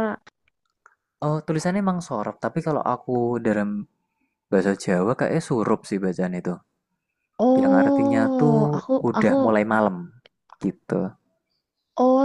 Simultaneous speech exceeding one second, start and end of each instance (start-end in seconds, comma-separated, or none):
7.6-9.3